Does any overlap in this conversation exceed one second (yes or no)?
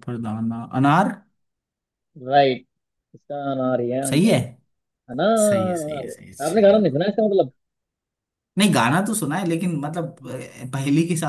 yes